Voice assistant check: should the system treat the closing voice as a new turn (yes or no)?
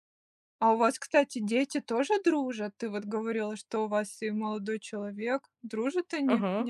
yes